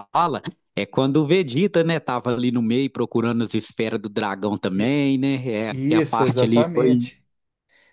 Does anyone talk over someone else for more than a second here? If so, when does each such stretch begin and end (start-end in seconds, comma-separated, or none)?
5.7-7.1